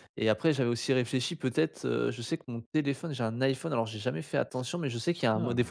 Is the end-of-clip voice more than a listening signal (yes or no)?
no